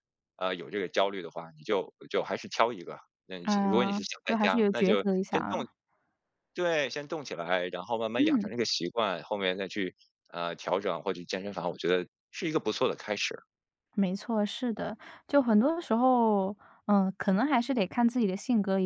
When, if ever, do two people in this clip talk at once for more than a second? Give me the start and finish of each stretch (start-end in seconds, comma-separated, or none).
3.4-5.6